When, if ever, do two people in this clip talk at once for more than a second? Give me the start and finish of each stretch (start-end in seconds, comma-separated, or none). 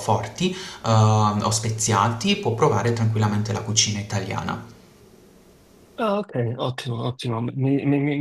none